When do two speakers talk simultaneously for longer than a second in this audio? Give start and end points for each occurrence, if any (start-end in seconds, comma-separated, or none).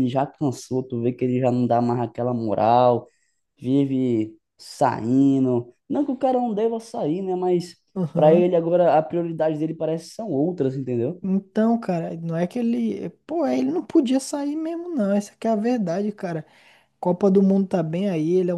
none